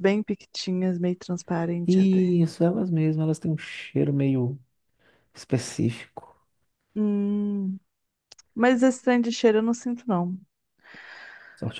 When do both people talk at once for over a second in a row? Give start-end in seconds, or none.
none